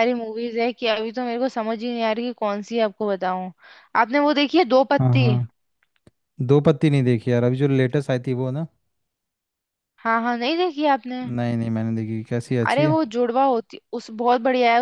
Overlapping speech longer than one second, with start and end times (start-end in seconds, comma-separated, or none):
none